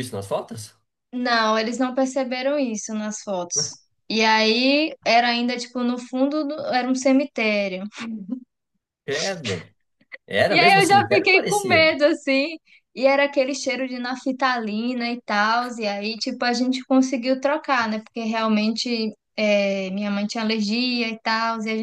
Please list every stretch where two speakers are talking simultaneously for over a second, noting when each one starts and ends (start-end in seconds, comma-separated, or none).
10.5-12.0